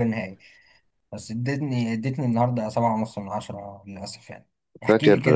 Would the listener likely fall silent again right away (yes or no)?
yes